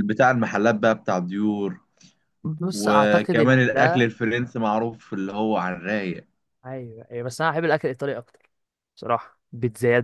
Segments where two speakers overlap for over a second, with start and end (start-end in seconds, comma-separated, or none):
2.7-4.1